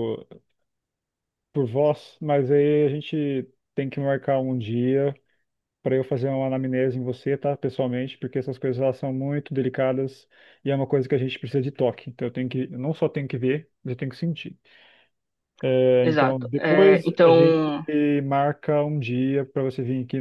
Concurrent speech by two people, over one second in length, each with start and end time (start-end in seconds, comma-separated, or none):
16.0-17.7